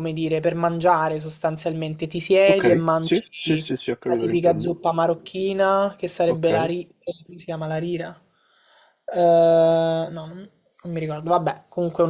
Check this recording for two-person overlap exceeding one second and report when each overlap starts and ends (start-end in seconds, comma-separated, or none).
2.5-4.7